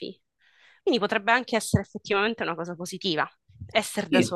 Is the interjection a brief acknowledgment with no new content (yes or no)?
yes